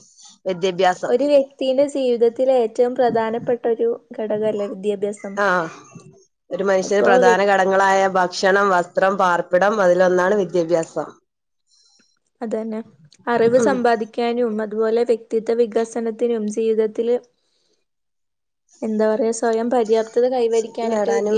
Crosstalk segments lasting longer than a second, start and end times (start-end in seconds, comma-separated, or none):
none